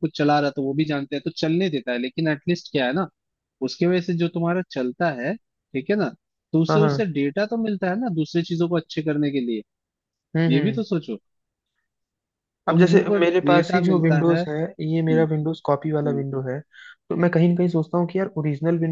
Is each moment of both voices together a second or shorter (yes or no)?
no